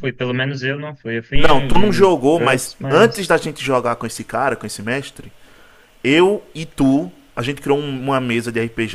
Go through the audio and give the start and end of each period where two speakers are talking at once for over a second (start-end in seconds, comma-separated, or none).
1.4-3.4